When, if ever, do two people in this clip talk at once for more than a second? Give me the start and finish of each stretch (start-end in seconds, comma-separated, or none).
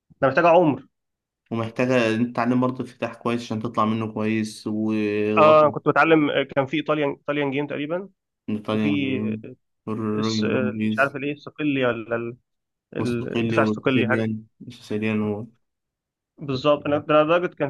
13.0-14.3